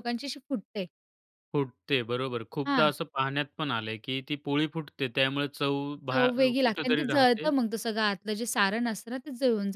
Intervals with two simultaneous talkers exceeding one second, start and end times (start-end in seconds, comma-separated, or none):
6.1-7.5